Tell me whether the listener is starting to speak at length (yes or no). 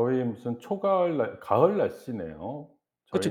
yes